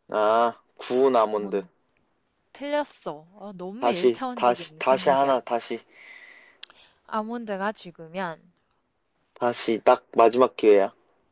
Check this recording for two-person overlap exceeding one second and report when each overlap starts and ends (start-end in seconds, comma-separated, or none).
3.8-5.4